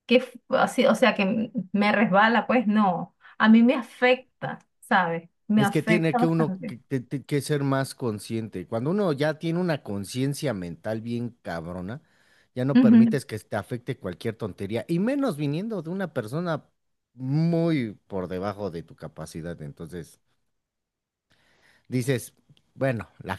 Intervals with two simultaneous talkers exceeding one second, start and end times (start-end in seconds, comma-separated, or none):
5.5-6.8